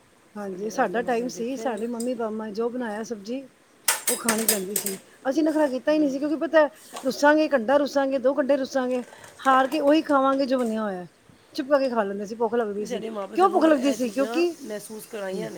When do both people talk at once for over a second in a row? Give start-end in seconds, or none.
none